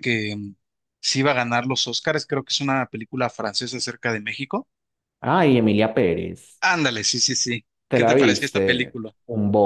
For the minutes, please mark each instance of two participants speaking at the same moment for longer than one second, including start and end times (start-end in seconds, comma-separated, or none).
7.9-9.1